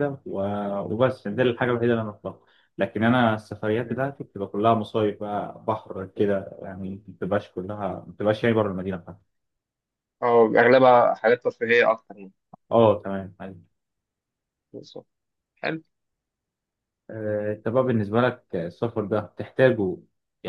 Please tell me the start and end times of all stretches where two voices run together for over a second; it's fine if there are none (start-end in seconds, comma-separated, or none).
none